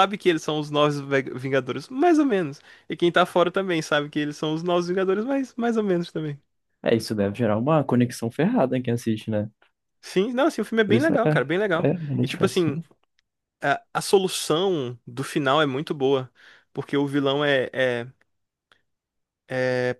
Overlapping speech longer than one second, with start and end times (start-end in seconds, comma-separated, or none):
10.8-12.8